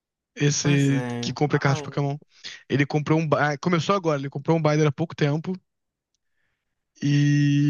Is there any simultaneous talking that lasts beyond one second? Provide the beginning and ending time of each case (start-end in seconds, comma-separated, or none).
0.6-2.1